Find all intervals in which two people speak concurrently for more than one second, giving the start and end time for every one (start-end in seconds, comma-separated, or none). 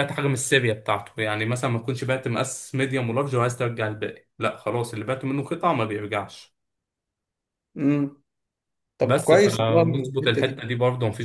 9.0-10.6